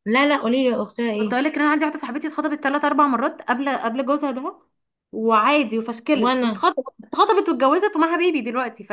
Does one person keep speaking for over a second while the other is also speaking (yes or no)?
no